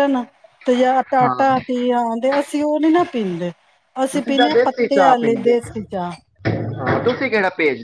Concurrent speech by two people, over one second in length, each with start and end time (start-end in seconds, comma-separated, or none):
4.1-6.1